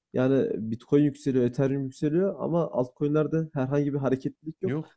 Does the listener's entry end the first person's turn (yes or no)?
no